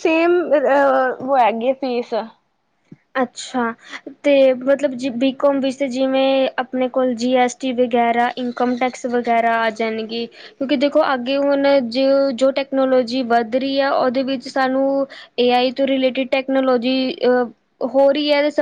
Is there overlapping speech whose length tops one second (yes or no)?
no